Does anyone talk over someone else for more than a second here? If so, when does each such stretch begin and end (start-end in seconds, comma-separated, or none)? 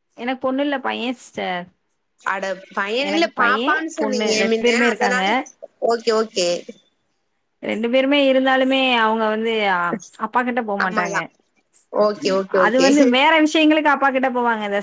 3.1-5.2